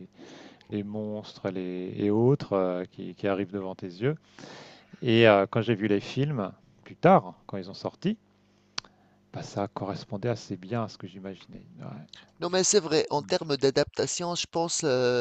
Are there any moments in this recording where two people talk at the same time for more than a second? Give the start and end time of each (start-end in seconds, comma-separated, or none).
none